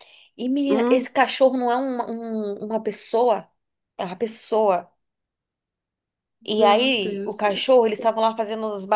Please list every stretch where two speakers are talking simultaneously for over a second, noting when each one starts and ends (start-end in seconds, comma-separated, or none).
6.5-7.8